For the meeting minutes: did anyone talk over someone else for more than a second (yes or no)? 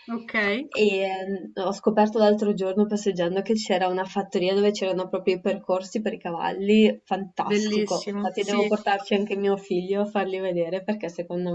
yes